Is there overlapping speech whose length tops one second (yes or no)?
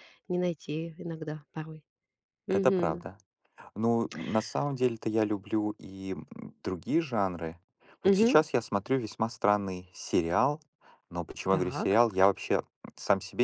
no